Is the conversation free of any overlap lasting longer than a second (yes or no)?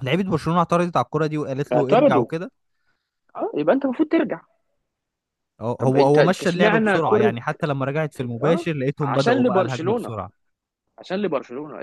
no